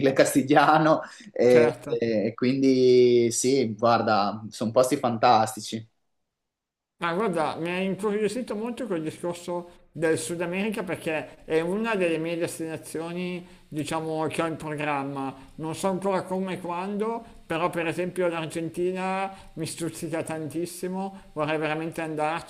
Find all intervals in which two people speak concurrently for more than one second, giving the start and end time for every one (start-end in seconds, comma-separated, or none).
none